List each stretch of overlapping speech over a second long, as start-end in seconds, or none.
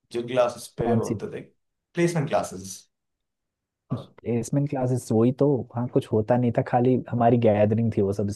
none